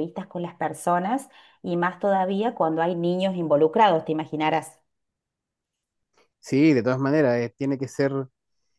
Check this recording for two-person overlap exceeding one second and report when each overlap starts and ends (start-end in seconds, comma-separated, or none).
none